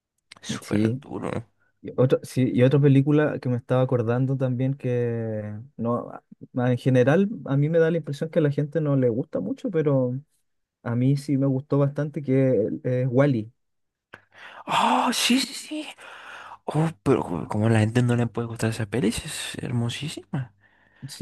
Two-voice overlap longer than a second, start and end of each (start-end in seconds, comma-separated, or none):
none